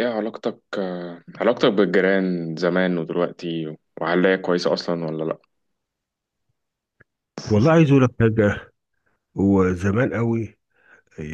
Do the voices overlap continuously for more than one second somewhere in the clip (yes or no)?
no